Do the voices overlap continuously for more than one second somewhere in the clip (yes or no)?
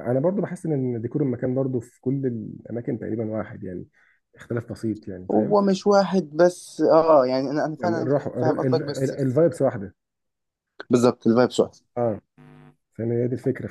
no